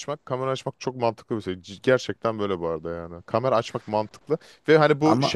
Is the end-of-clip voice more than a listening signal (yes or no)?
no